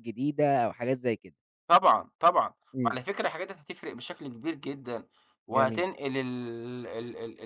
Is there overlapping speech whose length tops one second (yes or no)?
no